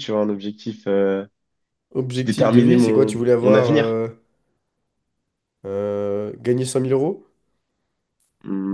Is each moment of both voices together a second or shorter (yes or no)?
no